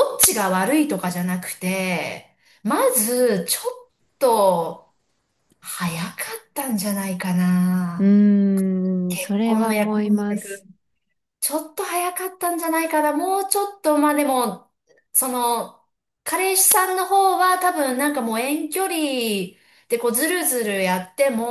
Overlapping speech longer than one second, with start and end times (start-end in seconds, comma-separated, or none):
9.1-10.6